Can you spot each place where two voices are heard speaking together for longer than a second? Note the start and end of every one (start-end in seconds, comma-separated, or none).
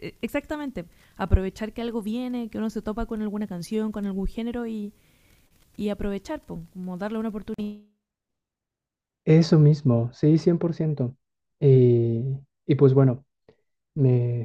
none